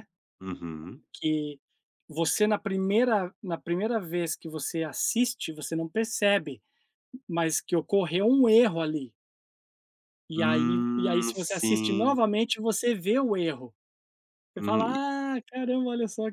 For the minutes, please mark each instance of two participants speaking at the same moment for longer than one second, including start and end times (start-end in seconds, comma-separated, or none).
10.4-12.2